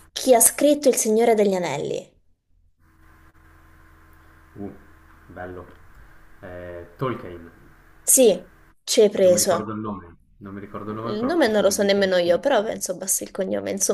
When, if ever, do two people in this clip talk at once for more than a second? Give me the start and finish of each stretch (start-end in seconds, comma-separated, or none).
11.1-12.7